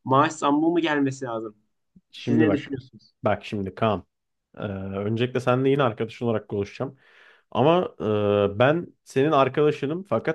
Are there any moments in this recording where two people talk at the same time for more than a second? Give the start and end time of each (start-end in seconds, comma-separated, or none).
none